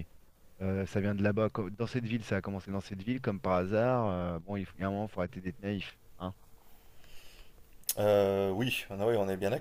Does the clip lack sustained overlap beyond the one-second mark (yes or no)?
yes